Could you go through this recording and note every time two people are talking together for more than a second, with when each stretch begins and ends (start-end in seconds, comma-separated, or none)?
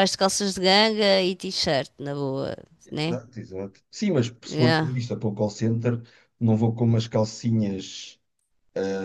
none